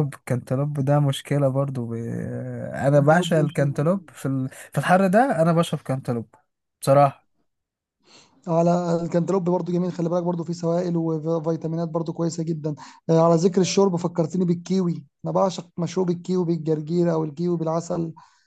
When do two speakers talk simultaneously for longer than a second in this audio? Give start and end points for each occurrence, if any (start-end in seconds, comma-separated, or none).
3.0-4.2